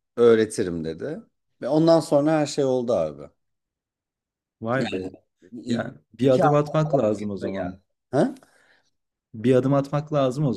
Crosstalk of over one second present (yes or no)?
yes